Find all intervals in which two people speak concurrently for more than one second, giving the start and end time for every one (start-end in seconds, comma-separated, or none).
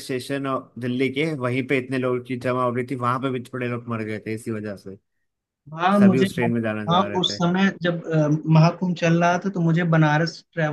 none